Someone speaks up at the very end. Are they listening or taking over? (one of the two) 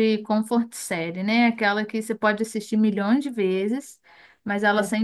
listening